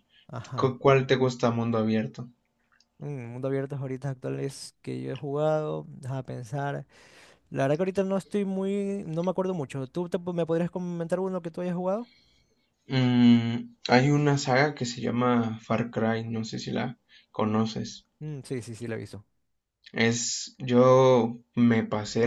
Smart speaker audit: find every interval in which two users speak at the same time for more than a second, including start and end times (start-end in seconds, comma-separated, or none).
none